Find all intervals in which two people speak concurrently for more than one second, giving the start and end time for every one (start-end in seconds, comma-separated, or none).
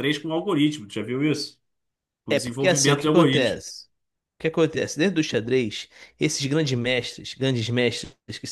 2.3-3.6